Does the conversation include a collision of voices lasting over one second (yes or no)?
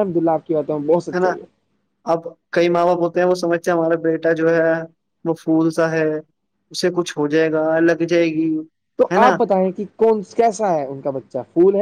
no